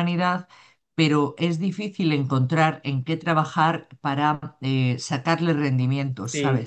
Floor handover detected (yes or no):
yes